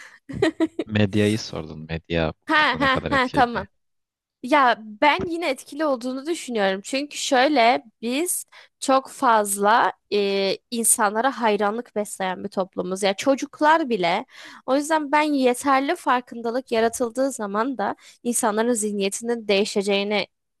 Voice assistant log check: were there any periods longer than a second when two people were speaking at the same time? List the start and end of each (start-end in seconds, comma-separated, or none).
2.5-3.7